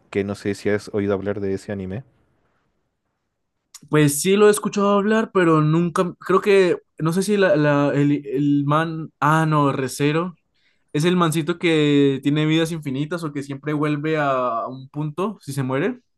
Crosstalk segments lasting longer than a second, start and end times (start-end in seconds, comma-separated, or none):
none